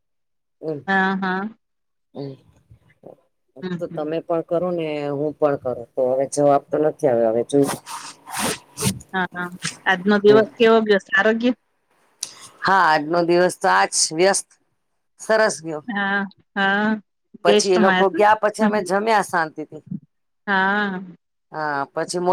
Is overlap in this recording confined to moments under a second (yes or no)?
no